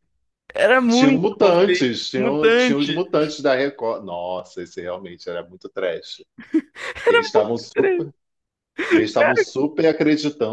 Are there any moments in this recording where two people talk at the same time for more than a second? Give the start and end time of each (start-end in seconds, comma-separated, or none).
0.9-3.0